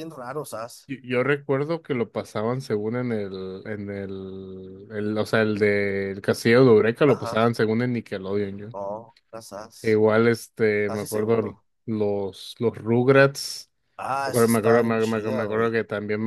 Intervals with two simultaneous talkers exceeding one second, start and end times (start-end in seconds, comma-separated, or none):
14.2-15.8